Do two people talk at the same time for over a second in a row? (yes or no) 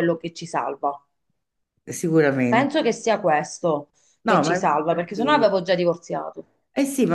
yes